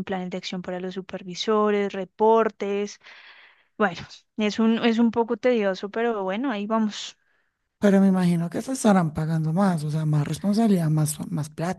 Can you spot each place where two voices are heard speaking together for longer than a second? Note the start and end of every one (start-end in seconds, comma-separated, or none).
none